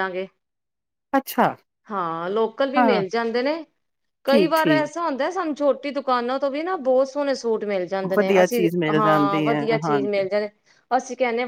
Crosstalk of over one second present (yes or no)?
yes